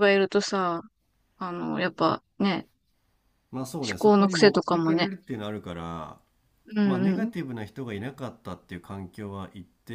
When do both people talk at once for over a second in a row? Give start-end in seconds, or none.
3.9-5.1